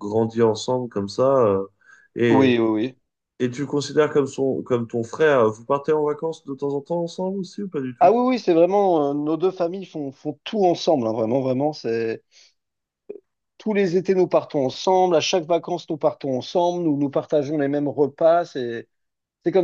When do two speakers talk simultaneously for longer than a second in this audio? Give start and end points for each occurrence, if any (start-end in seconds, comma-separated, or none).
none